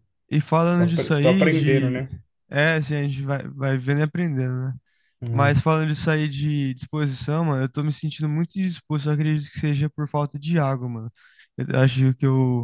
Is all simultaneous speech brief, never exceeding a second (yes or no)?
no